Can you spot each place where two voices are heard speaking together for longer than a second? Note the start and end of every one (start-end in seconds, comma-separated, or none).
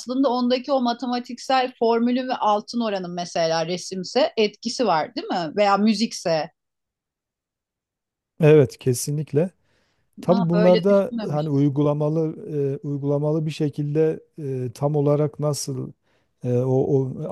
10.3-11.5